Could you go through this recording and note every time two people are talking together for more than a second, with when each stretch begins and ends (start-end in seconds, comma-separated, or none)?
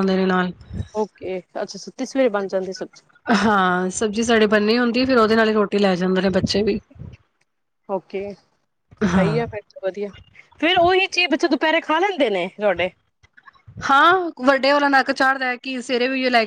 none